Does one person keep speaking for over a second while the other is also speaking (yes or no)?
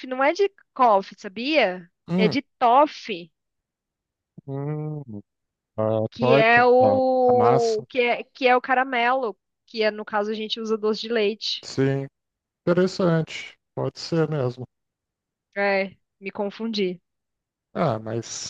yes